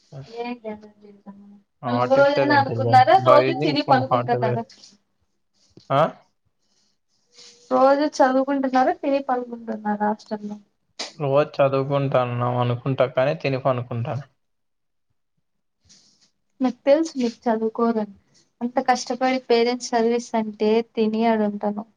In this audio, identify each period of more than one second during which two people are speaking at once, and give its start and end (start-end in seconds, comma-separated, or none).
2.0-4.6